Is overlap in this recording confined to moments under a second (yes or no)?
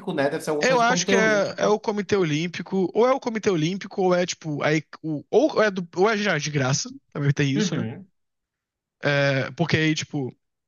no